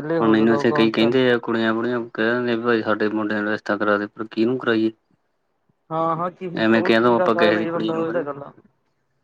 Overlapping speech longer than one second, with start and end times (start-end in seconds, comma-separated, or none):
6.6-8.4